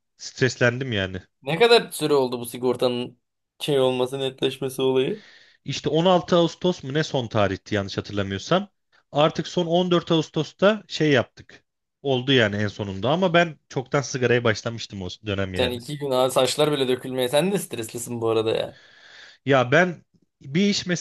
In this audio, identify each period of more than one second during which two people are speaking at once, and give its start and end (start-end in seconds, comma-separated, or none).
none